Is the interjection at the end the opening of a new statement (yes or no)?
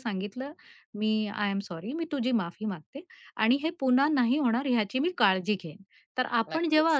no